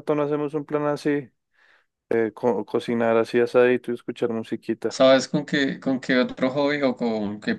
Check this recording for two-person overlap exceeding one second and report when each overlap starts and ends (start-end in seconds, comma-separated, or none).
none